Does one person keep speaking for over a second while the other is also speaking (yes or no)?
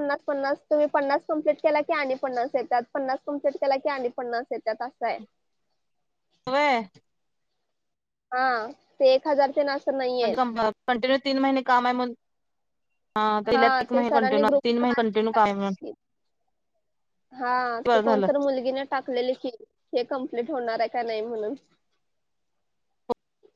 yes